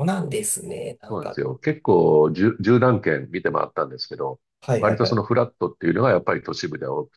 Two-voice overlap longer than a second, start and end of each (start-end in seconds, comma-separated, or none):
none